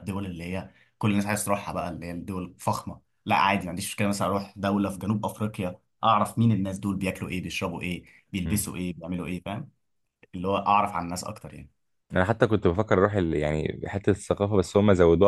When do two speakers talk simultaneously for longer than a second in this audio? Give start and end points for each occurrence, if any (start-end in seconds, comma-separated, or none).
none